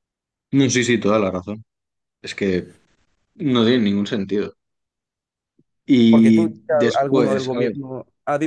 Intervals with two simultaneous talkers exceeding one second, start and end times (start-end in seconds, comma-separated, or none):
6.1-7.7